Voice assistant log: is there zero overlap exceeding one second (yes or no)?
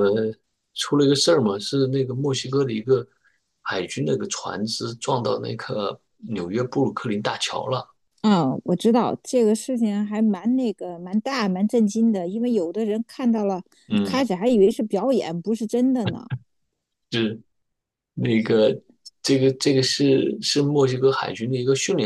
yes